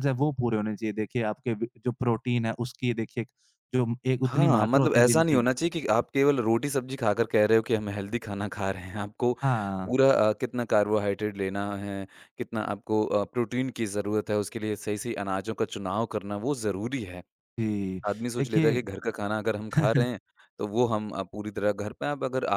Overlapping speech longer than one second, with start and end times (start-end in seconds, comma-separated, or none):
4.3-5.5